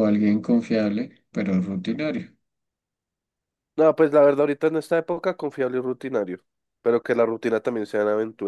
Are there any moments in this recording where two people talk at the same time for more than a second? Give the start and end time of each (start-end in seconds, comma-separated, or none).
none